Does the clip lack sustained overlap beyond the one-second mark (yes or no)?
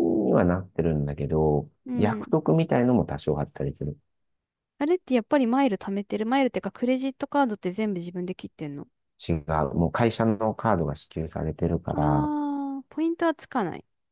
yes